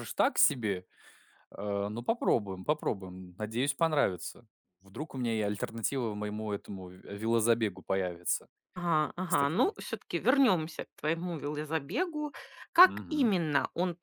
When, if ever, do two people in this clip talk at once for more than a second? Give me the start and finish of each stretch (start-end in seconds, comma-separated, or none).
none